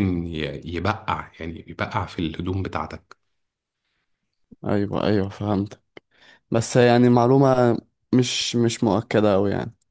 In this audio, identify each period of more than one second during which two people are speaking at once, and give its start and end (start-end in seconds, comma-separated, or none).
none